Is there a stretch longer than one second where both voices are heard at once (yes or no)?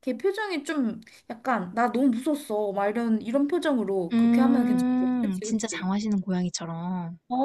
yes